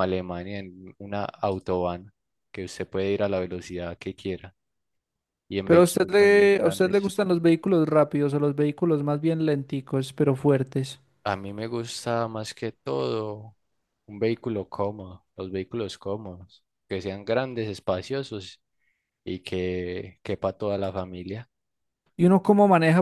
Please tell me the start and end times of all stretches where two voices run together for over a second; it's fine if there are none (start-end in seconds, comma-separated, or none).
5.7-7.1